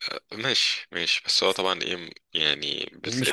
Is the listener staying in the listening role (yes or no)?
yes